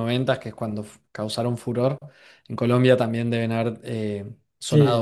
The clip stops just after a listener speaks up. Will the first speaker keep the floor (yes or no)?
no